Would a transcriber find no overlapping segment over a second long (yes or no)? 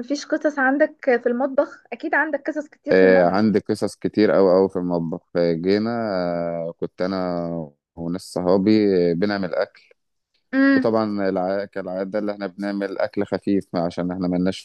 yes